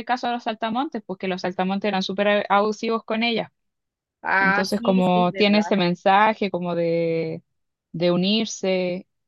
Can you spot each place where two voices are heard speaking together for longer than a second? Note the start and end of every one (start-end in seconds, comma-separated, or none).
4.4-5.8